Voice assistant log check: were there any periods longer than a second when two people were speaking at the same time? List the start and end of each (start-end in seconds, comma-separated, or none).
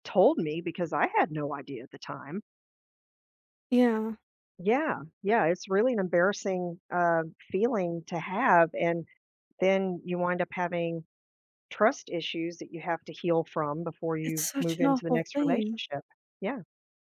14.2-15.8